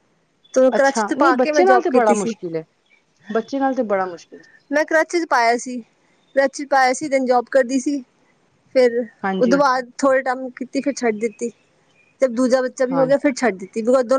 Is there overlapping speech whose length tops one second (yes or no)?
yes